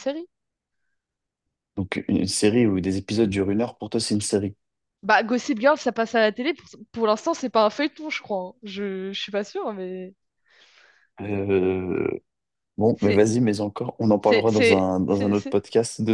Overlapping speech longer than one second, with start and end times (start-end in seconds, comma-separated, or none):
14.2-15.6